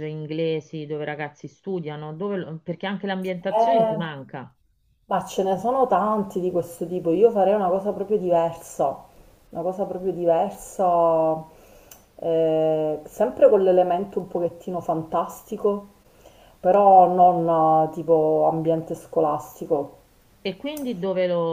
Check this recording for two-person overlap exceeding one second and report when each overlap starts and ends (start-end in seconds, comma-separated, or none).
none